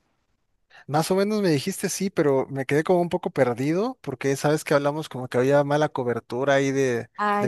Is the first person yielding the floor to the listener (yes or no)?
no